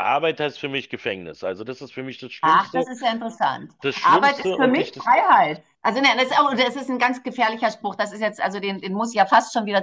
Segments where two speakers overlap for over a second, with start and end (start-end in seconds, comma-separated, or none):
3.8-5.1